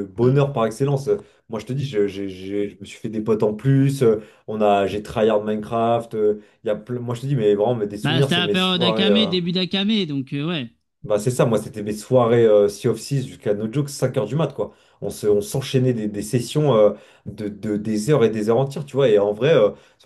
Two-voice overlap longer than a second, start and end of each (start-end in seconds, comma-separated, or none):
8.0-9.3